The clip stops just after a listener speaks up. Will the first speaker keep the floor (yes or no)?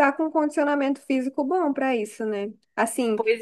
yes